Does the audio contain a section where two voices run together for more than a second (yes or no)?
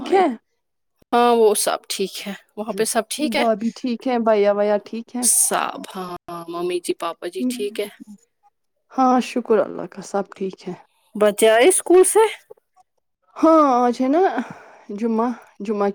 no